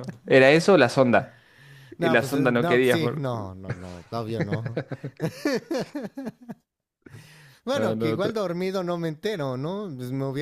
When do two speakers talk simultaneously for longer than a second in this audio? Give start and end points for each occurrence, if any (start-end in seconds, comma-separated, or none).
2.0-3.2